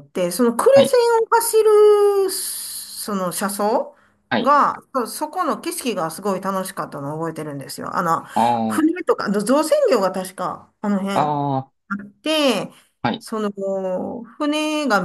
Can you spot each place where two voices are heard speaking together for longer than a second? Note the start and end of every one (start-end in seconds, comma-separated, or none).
none